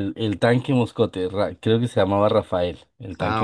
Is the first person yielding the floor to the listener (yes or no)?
no